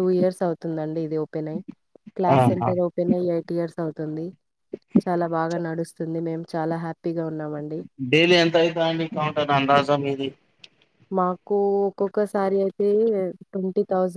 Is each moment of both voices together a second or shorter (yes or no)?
yes